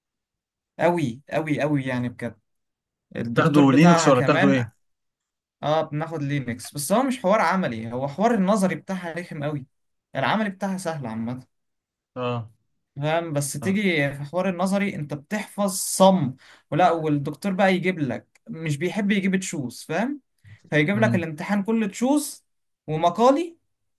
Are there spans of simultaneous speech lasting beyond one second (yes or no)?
yes